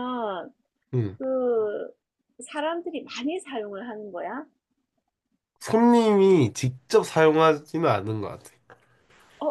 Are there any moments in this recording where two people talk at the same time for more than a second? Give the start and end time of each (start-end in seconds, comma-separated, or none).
none